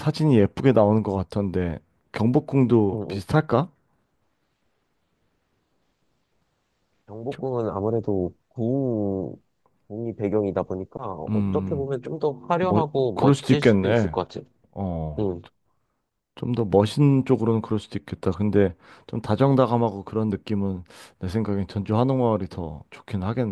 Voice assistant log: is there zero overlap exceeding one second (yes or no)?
no